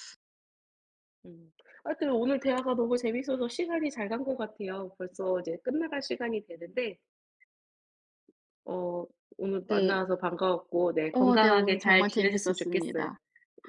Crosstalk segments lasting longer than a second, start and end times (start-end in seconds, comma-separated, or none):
11.1-13.1